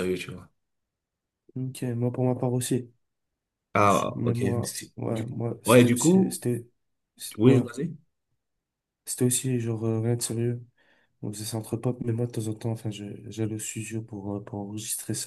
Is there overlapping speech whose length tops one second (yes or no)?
yes